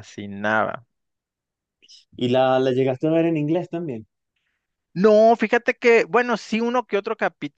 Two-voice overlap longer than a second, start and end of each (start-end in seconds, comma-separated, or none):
none